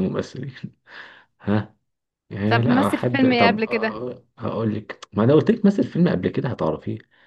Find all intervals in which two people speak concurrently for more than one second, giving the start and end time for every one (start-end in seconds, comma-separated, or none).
2.5-4.0